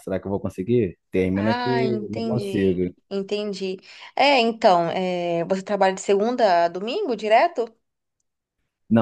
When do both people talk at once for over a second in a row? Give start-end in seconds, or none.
1.3-2.9